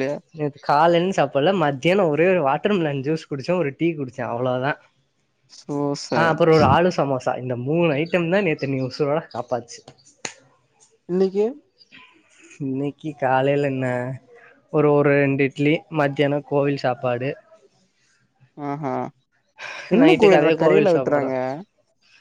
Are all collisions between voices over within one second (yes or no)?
no